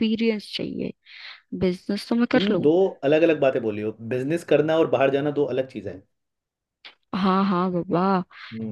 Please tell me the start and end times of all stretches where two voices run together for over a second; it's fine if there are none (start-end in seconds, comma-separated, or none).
none